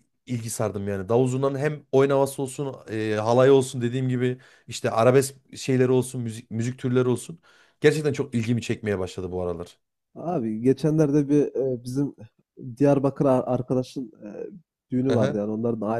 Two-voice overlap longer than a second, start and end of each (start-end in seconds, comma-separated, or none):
none